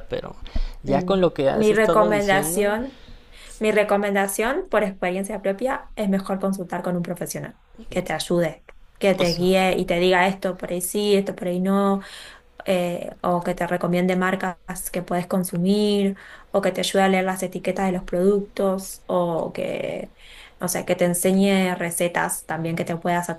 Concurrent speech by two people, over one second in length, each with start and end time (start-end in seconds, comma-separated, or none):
0.8-2.8